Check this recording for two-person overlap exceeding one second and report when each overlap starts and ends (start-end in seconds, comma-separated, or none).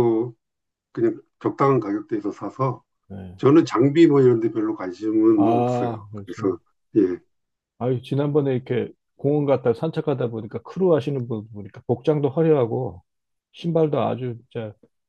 5.3-6.5